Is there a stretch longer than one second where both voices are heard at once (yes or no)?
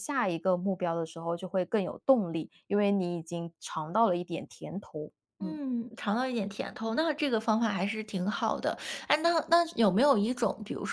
no